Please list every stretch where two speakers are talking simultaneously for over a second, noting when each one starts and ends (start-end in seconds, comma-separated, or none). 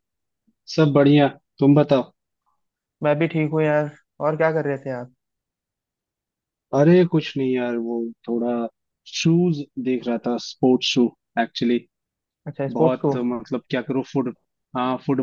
none